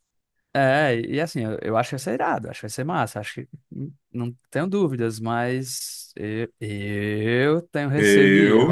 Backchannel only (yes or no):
yes